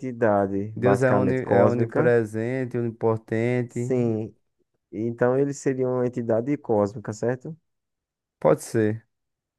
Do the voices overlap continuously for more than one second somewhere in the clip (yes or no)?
yes